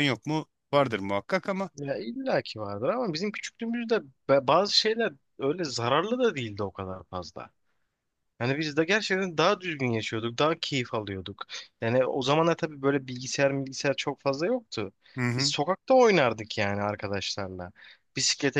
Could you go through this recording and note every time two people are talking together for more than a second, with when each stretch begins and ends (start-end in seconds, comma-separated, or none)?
none